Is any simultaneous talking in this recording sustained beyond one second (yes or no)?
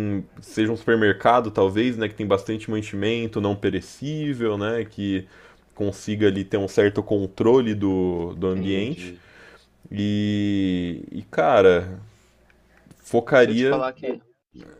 no